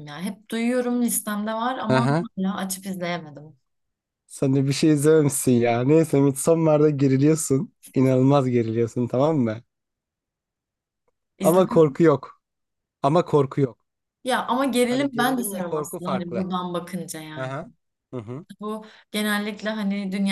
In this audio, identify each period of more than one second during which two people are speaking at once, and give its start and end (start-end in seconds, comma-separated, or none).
14.9-16.4